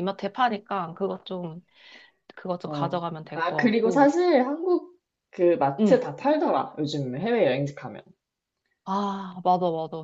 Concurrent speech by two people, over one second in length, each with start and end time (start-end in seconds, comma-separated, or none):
2.6-4.1